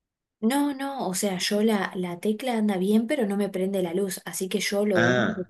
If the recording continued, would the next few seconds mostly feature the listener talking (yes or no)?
no